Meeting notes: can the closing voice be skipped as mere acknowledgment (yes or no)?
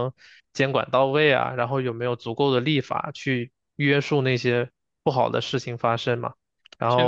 no